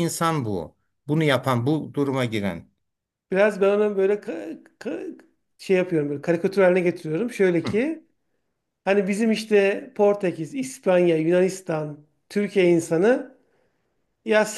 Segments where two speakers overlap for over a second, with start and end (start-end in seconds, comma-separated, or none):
none